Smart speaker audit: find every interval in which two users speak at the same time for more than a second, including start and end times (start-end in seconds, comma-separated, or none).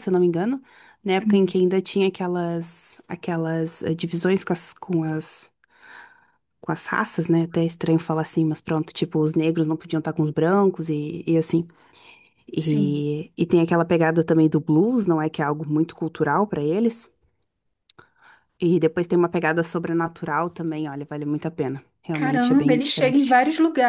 22.1-23.4